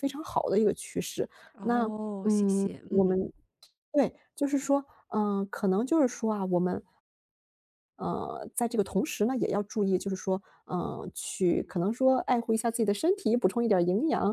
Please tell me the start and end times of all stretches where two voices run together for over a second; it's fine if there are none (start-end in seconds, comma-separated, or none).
1.5-3.2